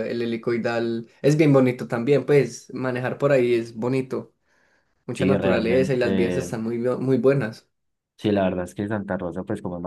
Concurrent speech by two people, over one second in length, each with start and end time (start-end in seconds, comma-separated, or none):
5.2-6.5